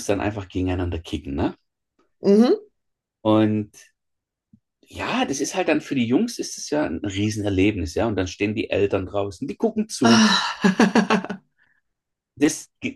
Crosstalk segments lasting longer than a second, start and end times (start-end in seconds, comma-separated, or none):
none